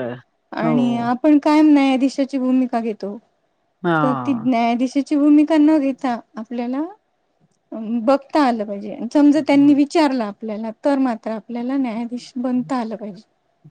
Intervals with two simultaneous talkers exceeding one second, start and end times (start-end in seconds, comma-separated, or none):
none